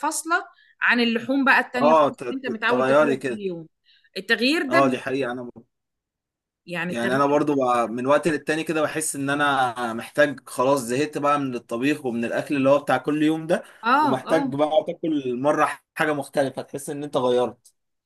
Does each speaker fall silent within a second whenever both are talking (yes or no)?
no